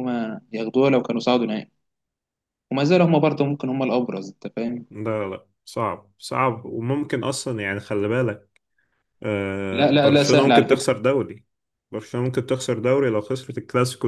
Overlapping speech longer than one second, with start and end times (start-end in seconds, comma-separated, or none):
9.7-10.9